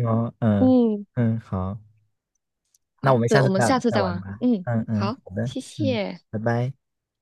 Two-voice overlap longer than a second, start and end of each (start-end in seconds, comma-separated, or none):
3.0-6.2